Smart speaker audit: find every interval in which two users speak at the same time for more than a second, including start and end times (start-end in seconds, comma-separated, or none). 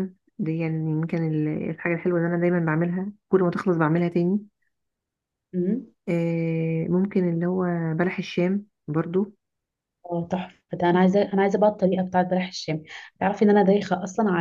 none